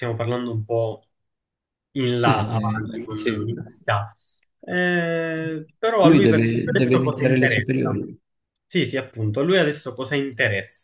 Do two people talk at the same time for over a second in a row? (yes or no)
yes